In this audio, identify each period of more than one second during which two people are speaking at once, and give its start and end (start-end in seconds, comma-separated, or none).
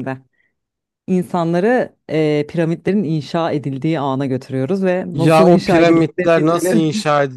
5.1-6.8